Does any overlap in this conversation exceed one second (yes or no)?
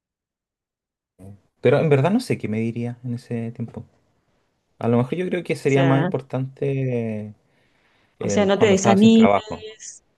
yes